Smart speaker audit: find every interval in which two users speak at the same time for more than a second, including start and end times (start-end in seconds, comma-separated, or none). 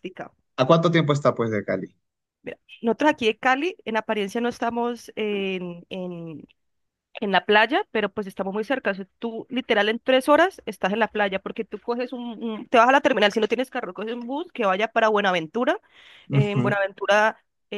none